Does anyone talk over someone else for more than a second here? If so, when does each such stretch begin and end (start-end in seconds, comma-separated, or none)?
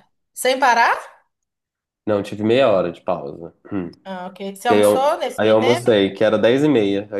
4.7-5.9